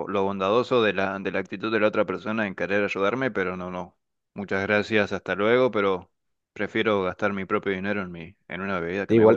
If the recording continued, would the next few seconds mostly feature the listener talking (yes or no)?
yes